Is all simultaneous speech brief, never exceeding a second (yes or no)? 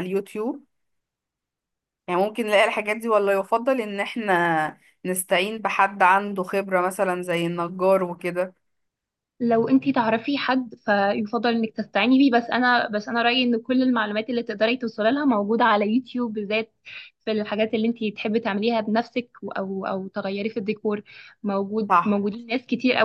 yes